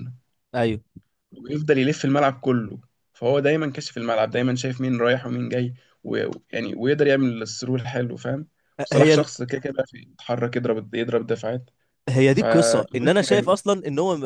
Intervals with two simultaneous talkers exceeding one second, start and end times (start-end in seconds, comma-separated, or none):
12.3-13.6